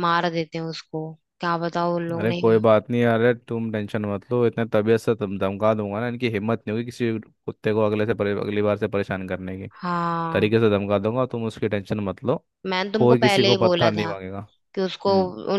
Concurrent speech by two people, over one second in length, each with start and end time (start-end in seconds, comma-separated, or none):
12.9-14.1